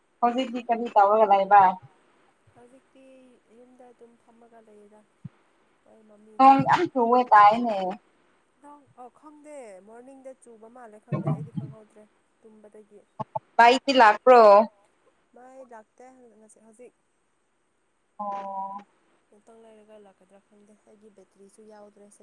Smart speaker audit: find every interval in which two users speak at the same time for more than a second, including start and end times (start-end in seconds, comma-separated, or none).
none